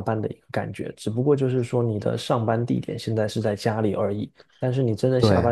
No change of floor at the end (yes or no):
yes